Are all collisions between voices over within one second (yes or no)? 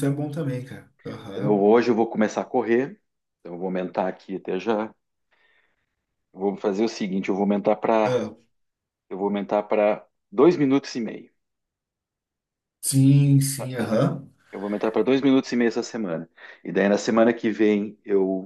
yes